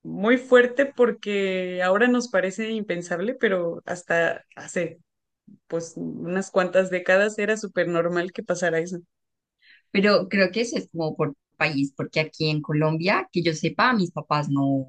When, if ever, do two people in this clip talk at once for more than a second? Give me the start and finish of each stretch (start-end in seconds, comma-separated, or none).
none